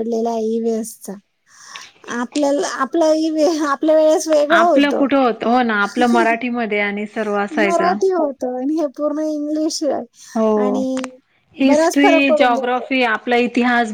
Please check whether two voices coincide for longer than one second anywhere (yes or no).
yes